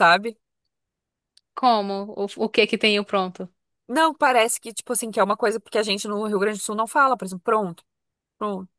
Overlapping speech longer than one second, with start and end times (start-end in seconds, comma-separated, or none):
none